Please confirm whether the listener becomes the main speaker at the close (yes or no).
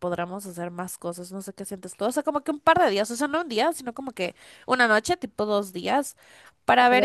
no